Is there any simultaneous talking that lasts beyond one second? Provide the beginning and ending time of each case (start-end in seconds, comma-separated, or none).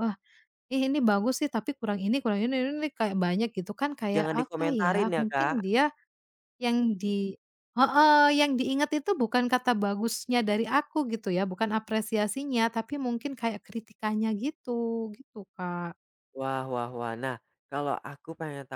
4.2-5.5